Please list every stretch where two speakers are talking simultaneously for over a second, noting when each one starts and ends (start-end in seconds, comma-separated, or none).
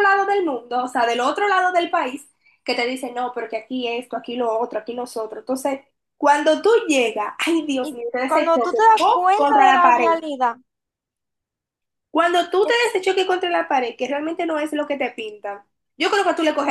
7.8-10.2